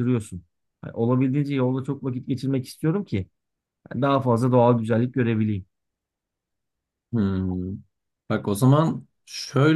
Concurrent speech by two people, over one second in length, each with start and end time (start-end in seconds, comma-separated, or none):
none